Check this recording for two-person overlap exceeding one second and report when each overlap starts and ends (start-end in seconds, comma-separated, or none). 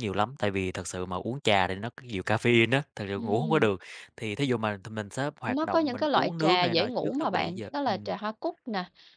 5.5-8.1